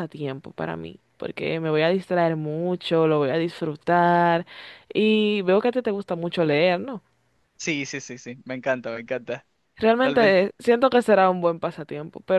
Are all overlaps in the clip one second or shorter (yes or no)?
yes